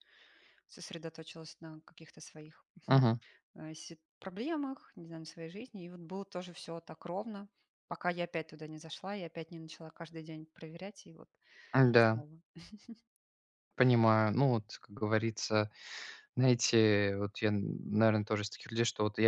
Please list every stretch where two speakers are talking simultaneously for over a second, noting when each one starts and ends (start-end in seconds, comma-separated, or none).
none